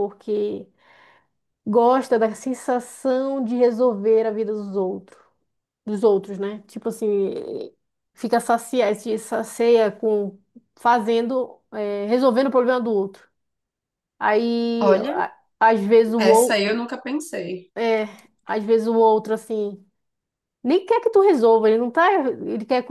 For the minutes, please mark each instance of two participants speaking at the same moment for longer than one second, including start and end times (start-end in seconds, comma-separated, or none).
none